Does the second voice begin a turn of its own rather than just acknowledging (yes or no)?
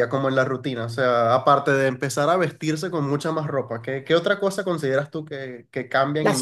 yes